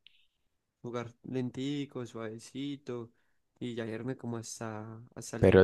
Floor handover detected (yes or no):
yes